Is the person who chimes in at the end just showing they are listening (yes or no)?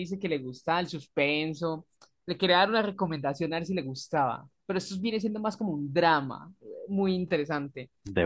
yes